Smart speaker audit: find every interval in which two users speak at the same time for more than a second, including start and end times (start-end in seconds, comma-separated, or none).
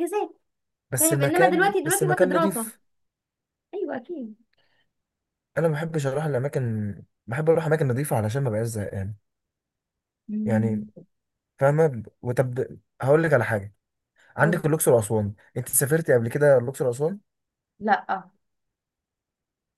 1.0-2.7